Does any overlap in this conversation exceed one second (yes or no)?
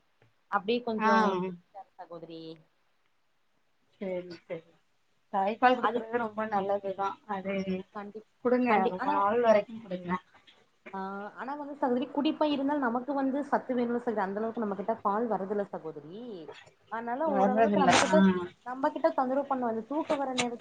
no